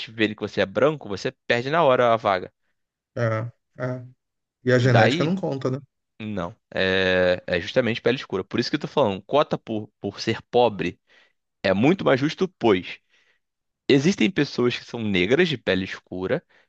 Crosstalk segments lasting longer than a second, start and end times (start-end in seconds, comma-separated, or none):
none